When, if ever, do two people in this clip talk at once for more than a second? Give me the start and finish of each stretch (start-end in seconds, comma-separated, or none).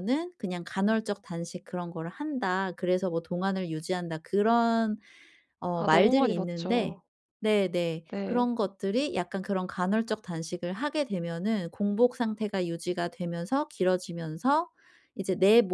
5.7-7.0